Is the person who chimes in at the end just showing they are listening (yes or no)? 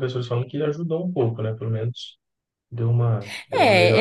no